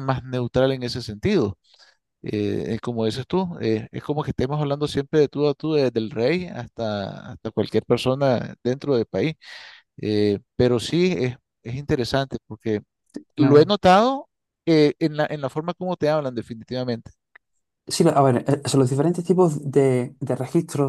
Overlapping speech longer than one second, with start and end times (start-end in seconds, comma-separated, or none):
none